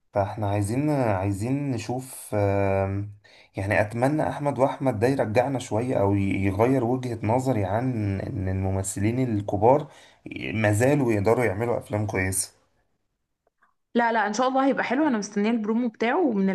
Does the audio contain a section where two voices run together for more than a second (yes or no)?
no